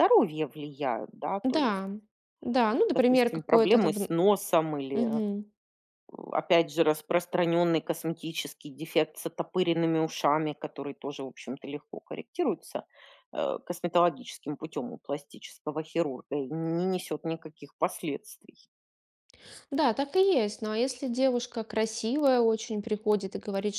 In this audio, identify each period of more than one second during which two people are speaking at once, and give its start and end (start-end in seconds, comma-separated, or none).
2.9-4.1